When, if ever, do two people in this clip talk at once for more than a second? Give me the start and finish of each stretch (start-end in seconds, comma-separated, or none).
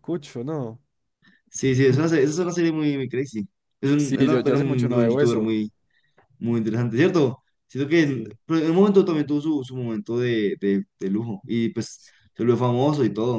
4.0-5.5